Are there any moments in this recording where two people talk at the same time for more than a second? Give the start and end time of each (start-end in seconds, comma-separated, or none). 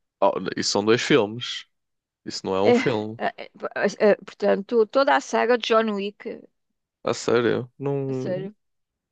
none